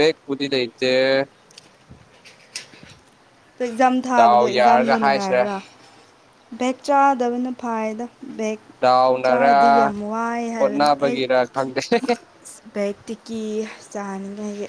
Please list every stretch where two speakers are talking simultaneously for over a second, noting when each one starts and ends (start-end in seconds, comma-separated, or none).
4.2-5.4